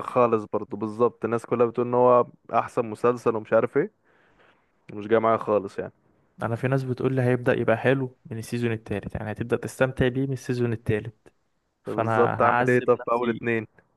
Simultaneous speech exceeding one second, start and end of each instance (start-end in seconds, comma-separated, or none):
11.8-13.4